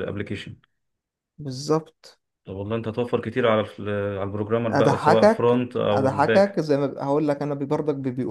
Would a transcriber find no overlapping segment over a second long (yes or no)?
no